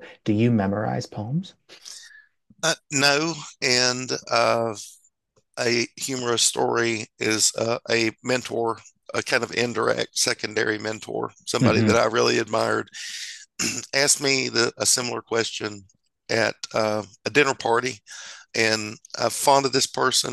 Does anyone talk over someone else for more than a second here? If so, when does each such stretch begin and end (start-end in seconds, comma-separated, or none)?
none